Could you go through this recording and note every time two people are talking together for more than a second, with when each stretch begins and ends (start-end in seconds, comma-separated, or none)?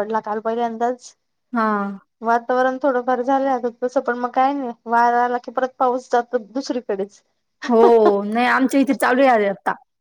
none